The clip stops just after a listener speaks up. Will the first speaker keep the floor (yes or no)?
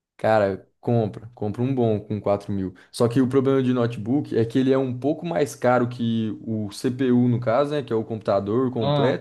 yes